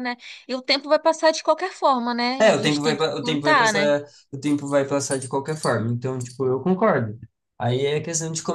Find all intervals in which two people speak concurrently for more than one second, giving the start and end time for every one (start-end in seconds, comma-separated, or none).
2.4-4.0